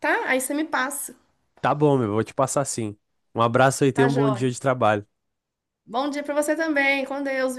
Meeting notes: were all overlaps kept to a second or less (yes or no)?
yes